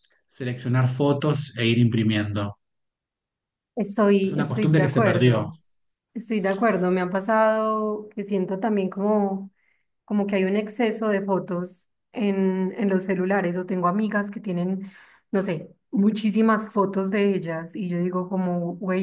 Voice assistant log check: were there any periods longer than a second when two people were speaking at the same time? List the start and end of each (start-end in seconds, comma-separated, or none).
4.2-5.5